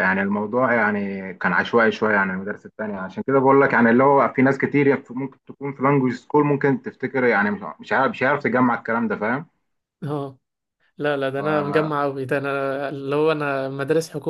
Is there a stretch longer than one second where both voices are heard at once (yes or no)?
no